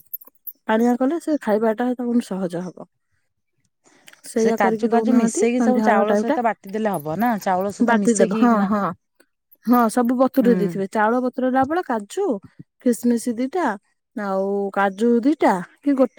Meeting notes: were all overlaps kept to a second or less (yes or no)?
no